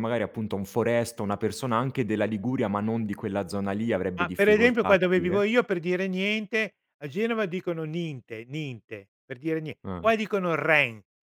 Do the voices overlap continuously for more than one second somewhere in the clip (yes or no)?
yes